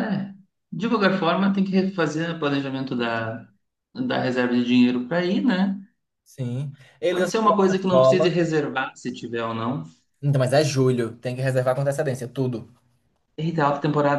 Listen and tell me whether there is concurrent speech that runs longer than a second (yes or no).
yes